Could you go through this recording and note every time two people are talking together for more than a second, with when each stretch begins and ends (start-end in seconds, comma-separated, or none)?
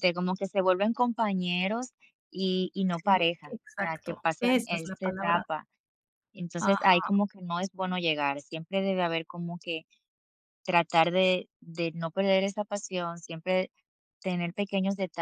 2.9-5.5